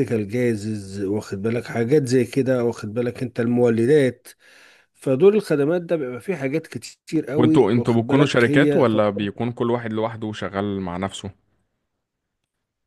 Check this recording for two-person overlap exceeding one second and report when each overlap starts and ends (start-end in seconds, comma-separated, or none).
7.3-9.3